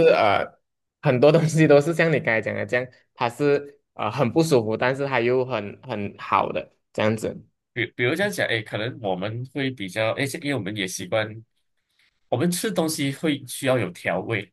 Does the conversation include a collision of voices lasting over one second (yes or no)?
no